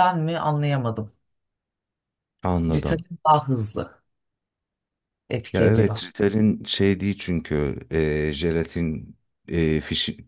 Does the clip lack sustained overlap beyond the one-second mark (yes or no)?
yes